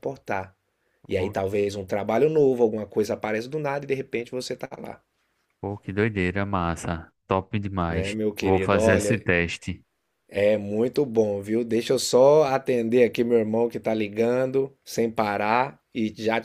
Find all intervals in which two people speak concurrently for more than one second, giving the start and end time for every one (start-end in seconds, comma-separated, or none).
7.9-9.2